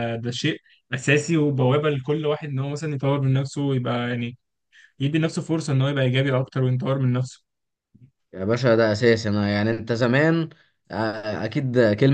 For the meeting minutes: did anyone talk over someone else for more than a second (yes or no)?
no